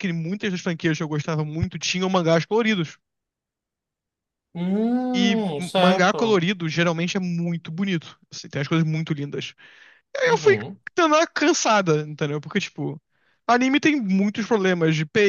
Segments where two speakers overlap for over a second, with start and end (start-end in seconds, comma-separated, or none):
5.1-6.4